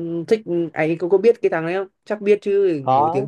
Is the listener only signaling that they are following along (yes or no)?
no